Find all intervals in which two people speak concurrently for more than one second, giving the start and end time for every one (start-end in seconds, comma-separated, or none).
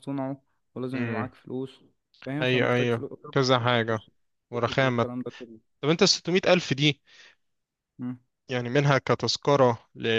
2.4-4.0